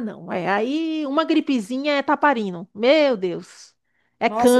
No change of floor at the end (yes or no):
no